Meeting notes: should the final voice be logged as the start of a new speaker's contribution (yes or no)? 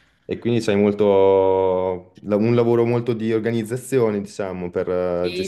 yes